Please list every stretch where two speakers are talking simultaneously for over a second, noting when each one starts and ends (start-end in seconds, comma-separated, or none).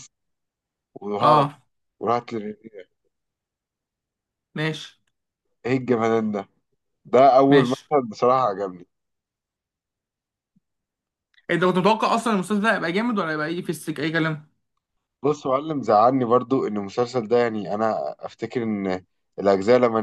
none